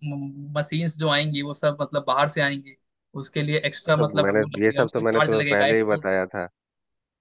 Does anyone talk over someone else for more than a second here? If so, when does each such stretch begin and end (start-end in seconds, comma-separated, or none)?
4.0-6.1